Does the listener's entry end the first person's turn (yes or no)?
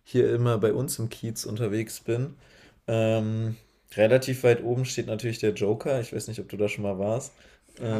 yes